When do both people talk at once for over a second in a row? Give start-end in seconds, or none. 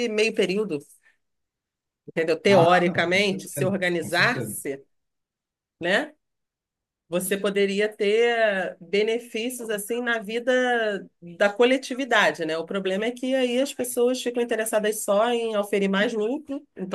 2.5-4.6